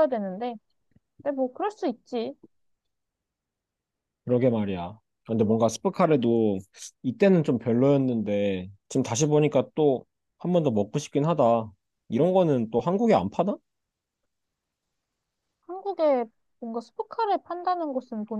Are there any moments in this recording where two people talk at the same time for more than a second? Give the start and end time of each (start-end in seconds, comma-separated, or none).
none